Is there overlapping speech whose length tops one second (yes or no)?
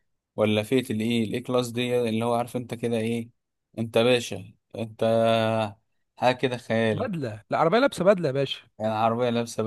no